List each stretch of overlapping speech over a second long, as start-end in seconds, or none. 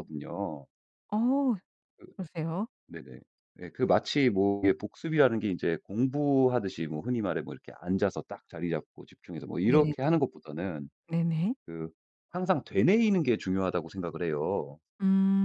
none